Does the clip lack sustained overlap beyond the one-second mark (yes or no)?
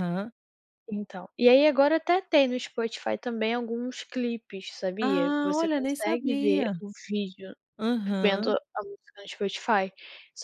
no